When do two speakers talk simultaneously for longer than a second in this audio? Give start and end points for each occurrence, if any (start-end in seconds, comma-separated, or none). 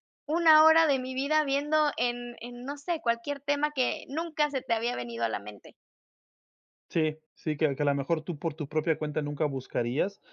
none